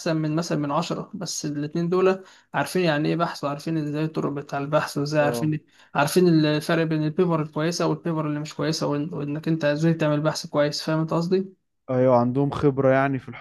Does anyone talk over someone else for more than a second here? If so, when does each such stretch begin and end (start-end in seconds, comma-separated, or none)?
none